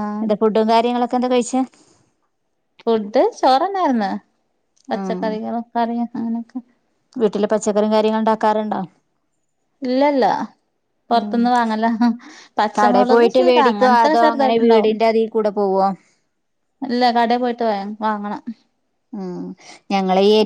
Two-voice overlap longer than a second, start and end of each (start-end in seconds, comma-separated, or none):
12.8-14.9